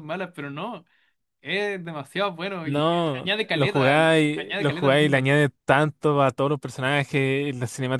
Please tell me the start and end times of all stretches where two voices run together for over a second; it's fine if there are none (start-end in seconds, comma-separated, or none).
2.6-5.3